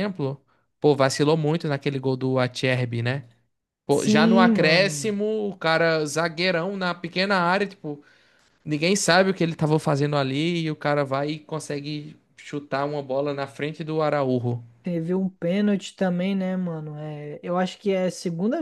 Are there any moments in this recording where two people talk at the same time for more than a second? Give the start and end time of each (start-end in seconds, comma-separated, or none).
3.9-5.1